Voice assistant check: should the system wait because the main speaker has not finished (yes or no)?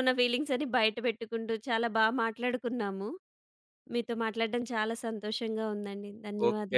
no